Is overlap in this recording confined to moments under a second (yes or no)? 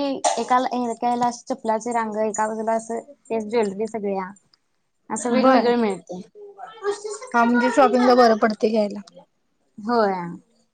yes